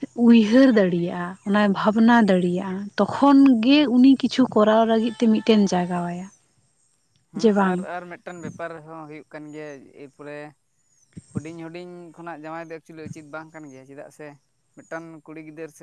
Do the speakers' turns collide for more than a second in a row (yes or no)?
no